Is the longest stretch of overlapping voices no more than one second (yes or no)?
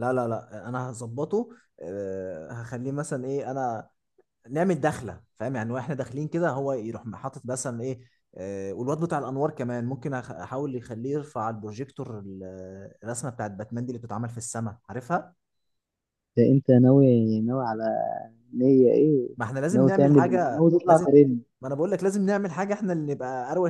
no